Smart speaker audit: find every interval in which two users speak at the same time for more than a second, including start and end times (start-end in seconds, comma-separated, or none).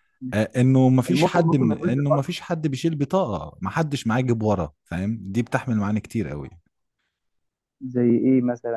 1.1-2.4